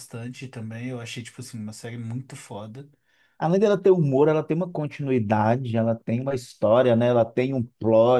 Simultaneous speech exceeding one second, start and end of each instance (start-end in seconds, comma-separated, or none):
none